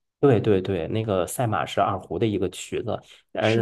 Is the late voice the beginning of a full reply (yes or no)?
no